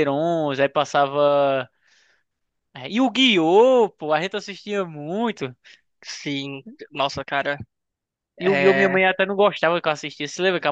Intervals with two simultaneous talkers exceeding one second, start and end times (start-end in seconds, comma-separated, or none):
none